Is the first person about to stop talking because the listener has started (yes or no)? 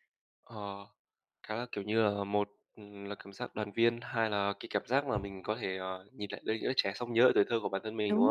yes